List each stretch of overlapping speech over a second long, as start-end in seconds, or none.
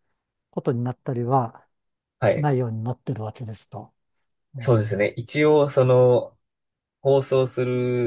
none